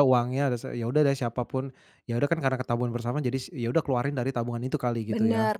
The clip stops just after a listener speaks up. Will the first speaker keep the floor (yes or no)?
no